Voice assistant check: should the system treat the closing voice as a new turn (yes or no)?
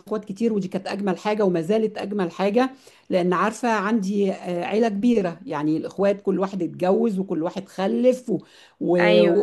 no